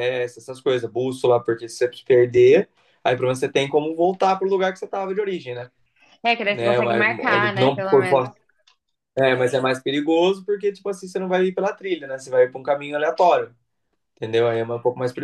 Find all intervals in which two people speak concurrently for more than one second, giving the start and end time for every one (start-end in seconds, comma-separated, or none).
6.5-8.2